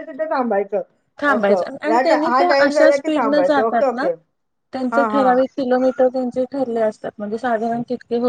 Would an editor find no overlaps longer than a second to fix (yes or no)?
no